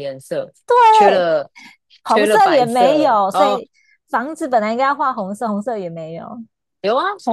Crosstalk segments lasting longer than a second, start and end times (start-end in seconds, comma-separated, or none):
2.1-3.6